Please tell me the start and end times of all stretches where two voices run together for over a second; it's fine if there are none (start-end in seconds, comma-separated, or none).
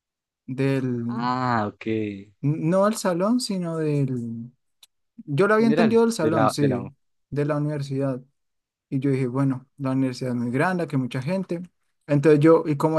5.6-6.9